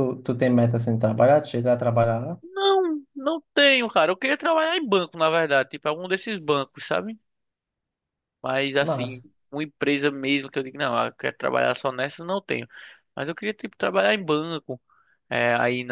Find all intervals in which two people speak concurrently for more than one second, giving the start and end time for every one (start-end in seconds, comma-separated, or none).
none